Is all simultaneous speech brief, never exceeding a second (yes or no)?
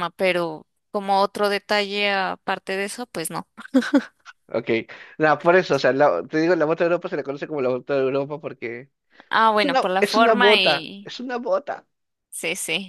no